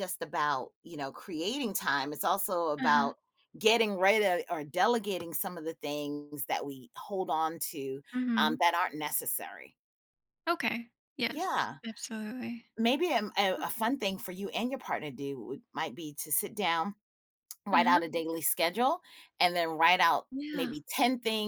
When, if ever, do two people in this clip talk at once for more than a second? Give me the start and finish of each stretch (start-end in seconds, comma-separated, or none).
none